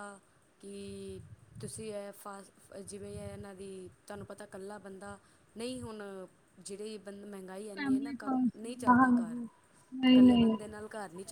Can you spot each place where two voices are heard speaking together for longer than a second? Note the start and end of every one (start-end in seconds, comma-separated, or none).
7.6-9.4